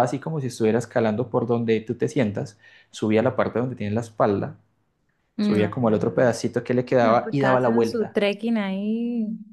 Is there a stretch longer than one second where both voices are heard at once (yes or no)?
yes